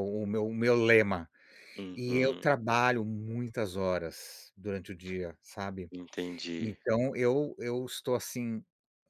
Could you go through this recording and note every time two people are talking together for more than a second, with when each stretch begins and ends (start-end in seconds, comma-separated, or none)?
none